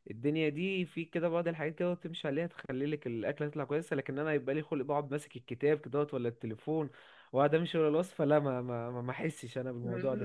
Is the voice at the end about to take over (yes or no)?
yes